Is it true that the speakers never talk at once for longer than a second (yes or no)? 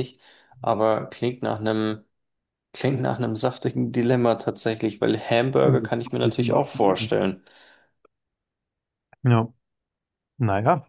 no